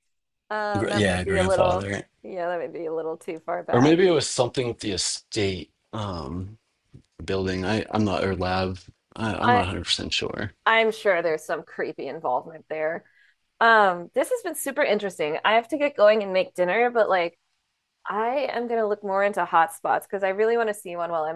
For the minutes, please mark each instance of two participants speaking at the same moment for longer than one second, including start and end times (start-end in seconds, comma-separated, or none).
0.8-2.0